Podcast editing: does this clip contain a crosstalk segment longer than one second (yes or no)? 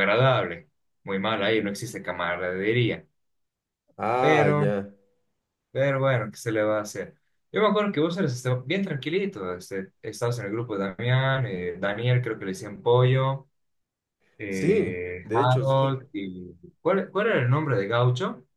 yes